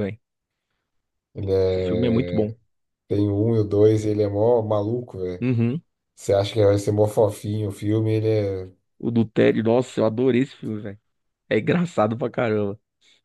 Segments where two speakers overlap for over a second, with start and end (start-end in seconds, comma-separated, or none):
none